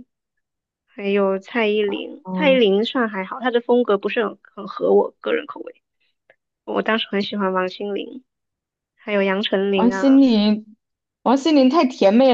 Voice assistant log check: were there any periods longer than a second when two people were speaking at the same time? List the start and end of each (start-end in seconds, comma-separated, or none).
none